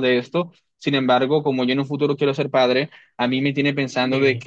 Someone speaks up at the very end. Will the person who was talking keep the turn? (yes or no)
yes